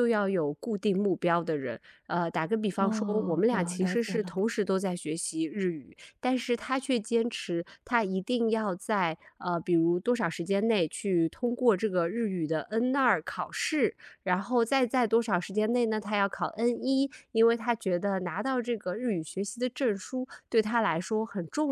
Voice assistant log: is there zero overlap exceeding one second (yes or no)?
no